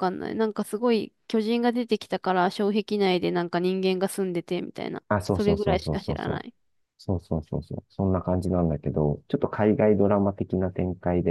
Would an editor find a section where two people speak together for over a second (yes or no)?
yes